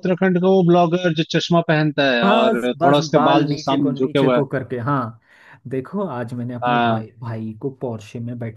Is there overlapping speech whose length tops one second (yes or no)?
yes